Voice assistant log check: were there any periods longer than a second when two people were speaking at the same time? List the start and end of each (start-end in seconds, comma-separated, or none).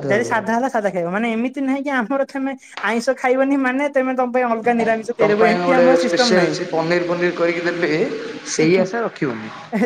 none